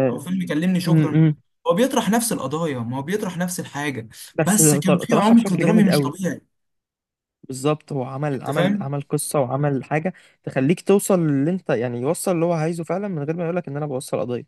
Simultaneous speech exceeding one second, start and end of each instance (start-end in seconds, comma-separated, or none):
4.3-6.1